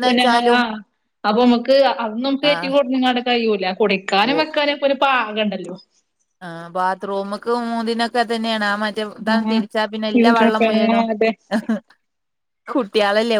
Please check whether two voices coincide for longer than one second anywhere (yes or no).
yes